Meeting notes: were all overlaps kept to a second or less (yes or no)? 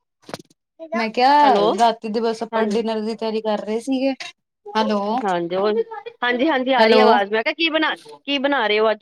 yes